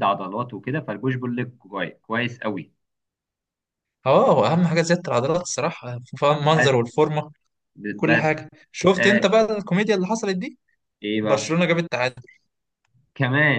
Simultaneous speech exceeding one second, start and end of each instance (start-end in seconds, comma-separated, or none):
none